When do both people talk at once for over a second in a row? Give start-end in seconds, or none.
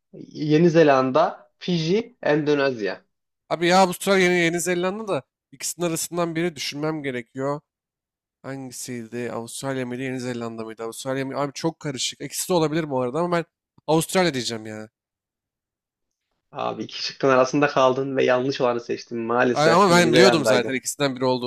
19.5-20.8